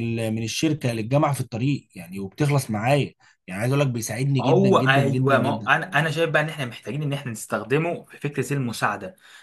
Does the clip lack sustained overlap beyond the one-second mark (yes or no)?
no